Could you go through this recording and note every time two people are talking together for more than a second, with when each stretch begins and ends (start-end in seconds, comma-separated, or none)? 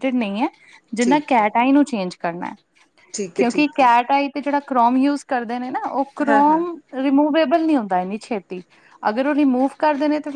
none